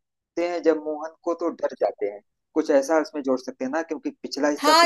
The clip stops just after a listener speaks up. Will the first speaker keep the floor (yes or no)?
no